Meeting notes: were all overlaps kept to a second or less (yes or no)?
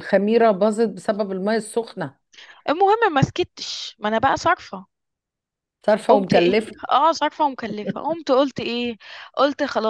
yes